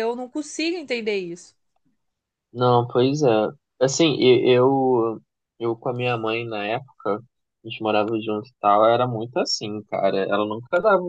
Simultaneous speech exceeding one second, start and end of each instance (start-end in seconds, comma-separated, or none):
none